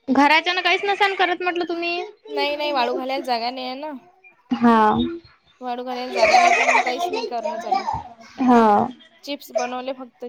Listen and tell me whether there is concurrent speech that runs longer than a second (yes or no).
no